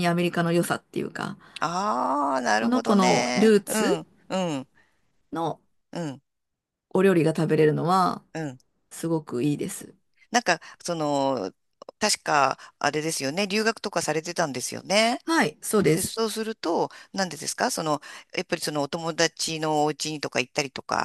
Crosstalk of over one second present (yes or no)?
yes